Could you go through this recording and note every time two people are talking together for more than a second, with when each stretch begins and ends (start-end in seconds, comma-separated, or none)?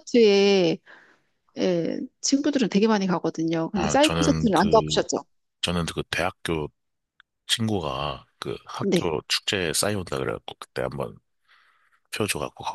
3.7-5.0